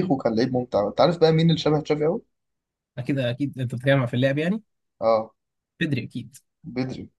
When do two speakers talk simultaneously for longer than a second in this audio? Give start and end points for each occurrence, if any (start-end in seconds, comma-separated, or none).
none